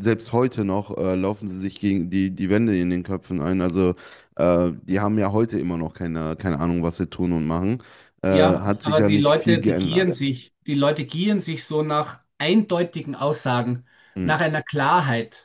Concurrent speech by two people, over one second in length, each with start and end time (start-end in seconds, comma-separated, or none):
8.3-10.2